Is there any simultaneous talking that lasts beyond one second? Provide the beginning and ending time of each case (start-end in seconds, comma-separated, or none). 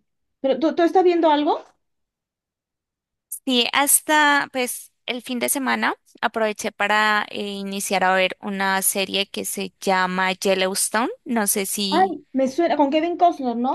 none